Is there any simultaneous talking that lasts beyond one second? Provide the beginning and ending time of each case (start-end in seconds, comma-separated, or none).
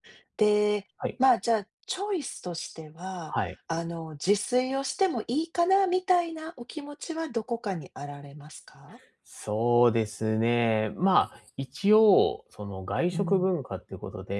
none